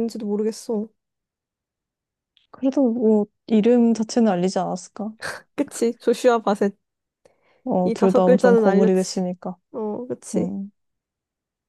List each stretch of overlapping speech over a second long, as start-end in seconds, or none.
7.8-9.2